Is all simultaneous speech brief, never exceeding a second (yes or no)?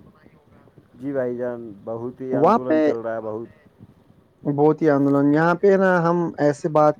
yes